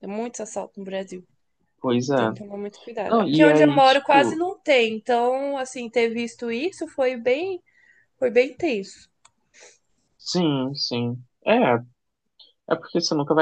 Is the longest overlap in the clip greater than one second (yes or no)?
yes